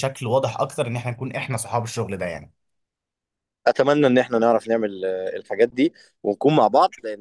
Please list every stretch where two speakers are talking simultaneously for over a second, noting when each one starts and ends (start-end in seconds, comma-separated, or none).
none